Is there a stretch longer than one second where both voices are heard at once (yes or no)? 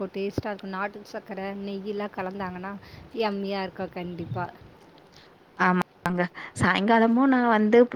no